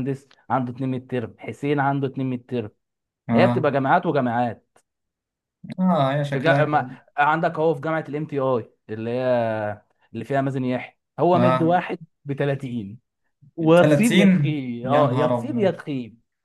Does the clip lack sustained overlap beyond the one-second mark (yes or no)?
no